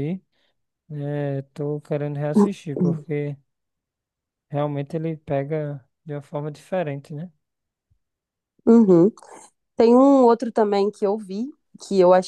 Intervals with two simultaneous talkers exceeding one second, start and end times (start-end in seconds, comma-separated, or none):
none